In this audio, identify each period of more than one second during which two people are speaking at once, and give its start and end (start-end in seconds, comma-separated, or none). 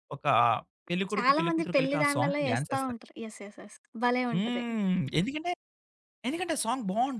1.1-3.0